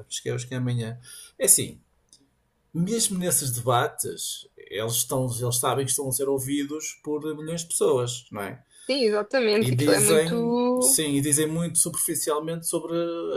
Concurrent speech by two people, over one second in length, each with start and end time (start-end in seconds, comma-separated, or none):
9.6-11.0